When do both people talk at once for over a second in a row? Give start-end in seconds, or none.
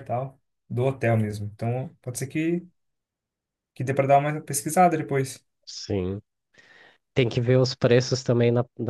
none